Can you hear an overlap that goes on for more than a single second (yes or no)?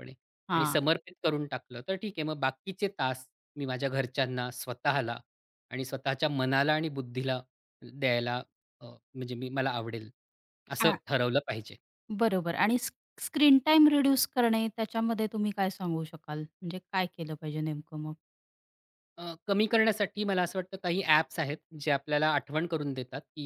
no